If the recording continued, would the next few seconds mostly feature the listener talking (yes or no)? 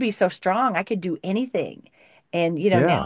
no